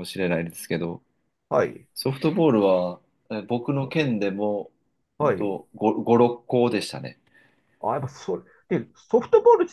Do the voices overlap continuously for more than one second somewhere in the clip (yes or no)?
no